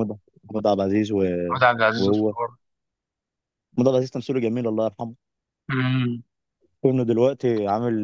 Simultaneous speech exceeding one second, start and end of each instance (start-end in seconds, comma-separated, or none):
none